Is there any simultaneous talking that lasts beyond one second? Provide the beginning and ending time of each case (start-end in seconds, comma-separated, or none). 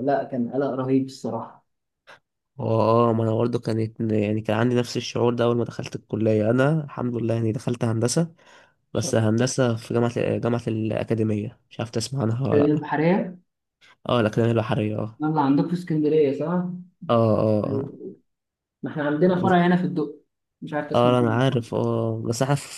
none